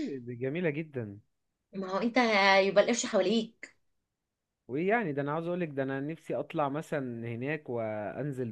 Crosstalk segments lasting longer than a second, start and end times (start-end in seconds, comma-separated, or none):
none